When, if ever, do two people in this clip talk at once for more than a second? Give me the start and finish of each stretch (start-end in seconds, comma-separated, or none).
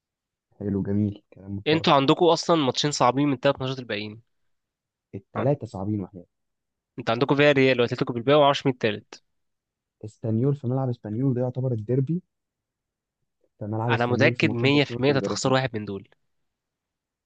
13.9-15.5